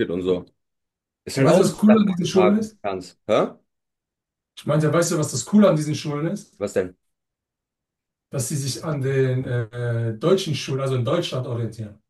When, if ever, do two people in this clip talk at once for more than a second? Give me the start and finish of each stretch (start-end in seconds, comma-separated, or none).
1.4-2.8